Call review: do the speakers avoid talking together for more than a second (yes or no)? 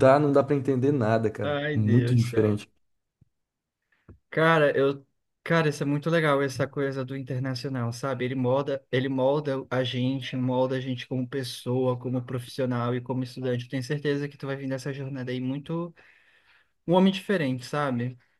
no